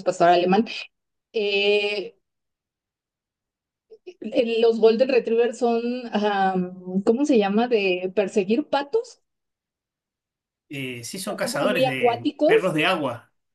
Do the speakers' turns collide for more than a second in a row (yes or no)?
yes